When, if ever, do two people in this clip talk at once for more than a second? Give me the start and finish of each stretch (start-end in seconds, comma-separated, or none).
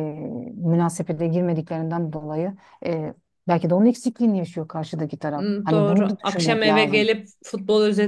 5.3-7.1